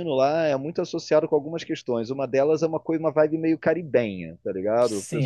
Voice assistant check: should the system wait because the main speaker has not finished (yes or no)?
no